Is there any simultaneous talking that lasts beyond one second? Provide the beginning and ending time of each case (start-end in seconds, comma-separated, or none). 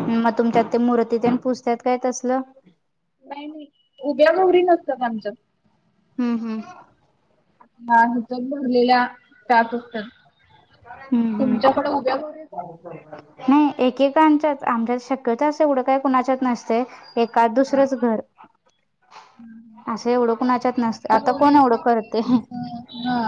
20.5-22.2